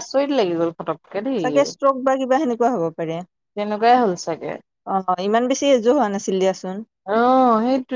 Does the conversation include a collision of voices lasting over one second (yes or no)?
no